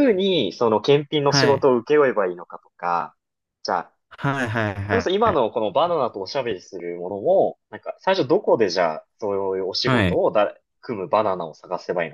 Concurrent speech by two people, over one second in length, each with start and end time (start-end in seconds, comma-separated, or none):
none